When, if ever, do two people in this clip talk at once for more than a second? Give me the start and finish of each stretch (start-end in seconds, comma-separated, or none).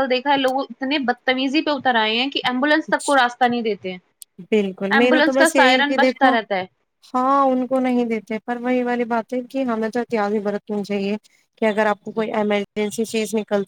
5.0-6.3